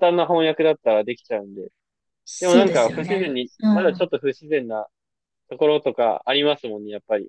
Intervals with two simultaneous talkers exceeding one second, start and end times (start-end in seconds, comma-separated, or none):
2.4-4.1